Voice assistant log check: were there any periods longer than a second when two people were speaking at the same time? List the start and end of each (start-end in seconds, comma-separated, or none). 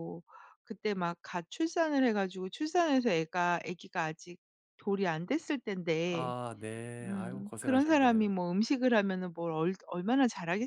7.0-8.3